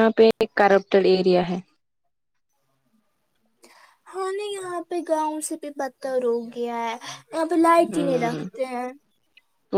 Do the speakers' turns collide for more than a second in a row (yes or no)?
no